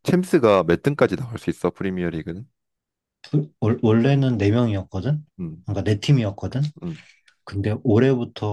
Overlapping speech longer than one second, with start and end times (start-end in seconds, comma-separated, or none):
none